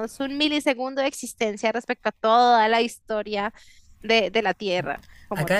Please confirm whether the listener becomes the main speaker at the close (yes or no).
yes